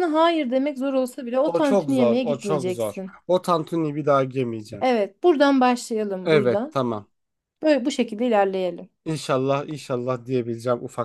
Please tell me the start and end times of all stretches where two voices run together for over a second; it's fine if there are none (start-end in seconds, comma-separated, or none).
1.4-3.1